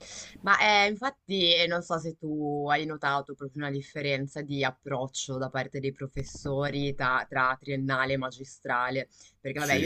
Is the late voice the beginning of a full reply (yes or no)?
no